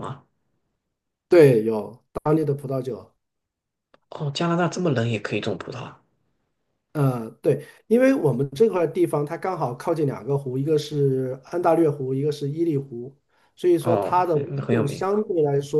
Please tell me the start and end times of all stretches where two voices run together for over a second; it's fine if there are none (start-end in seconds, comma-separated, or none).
13.8-15.1